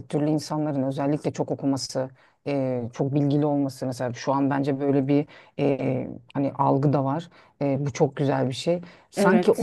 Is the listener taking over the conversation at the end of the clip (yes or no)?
no